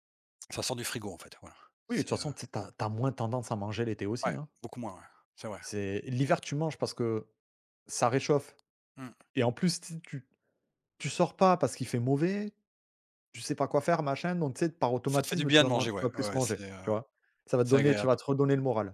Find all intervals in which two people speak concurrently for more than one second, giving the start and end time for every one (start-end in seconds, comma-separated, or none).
15.1-16.8